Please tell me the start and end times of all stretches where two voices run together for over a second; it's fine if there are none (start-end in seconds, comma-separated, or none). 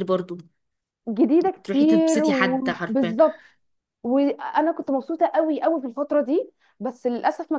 1.6-3.2